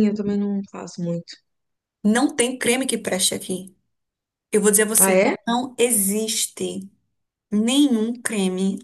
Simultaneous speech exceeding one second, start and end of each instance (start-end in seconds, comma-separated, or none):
none